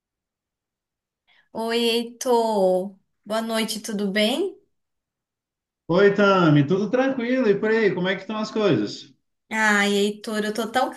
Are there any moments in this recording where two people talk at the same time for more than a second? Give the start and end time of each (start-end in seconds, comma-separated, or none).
none